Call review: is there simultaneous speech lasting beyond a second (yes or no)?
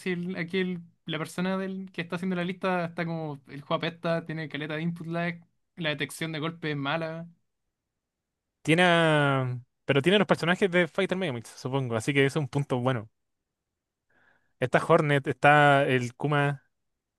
no